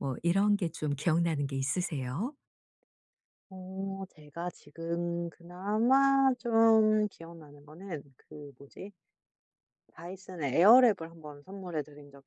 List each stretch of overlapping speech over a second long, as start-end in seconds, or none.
none